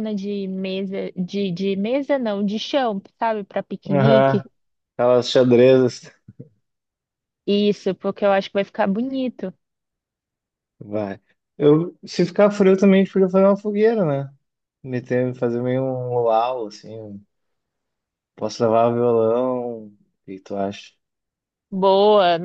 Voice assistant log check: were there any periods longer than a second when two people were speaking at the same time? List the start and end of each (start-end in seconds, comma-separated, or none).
none